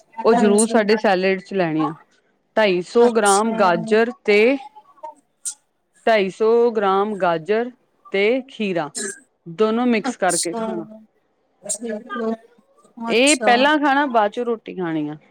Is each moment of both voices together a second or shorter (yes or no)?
yes